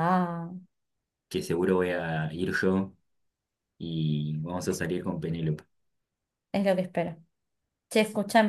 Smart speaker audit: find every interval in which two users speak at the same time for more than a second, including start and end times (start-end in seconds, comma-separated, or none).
none